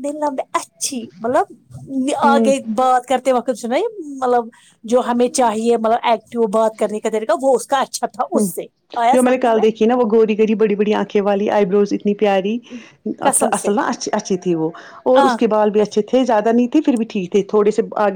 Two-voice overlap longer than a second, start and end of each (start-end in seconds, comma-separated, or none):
none